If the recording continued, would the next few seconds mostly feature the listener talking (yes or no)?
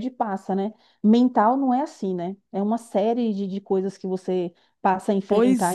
yes